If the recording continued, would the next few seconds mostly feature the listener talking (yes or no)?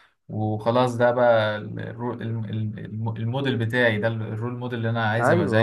yes